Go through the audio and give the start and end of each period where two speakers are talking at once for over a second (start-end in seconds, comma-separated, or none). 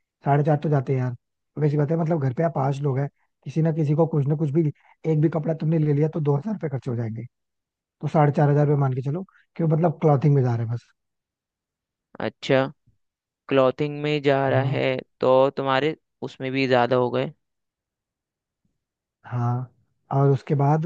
none